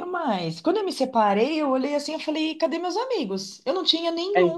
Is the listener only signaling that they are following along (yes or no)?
yes